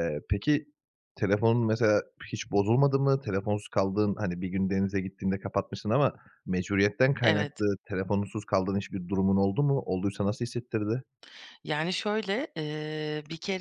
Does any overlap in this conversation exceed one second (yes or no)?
no